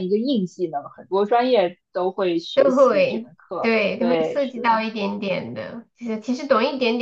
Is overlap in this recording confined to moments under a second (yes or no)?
no